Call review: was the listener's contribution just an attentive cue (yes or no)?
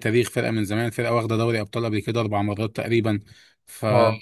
yes